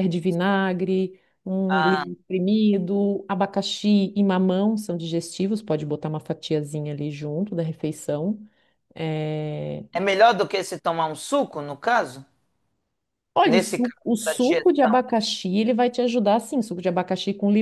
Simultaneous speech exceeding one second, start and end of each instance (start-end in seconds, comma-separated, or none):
13.4-14.9